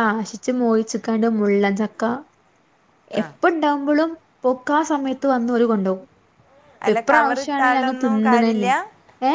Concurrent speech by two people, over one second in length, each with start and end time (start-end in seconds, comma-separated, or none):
7.0-8.7